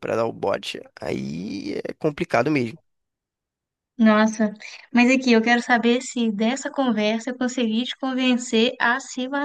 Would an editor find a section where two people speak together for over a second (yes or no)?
no